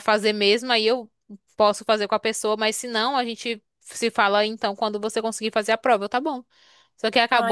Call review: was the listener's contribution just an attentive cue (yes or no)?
yes